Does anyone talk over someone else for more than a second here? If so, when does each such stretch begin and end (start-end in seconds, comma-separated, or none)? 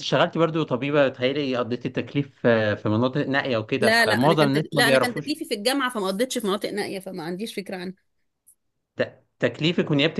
3.8-5.3